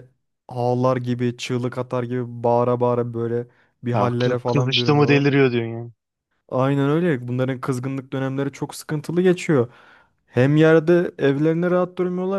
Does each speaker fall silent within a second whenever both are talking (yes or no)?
no